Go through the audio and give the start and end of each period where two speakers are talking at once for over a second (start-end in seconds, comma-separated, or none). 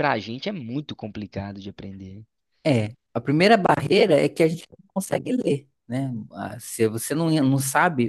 none